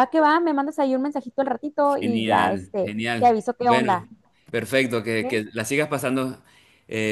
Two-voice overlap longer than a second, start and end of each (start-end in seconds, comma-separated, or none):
2.0-4.1